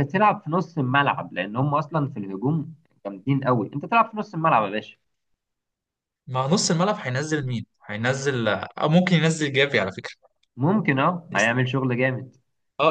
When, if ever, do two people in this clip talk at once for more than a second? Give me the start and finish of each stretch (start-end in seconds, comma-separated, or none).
none